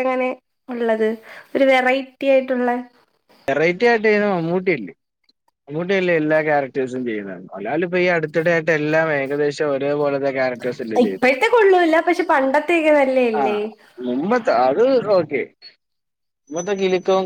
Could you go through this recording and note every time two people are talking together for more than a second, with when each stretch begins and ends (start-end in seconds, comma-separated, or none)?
none